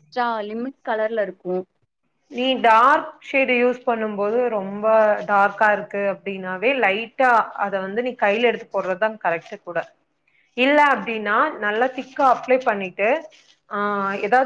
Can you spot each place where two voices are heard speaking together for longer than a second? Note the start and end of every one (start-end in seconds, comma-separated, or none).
none